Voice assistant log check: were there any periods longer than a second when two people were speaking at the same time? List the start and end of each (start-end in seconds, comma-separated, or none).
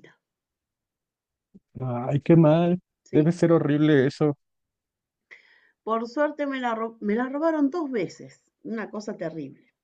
none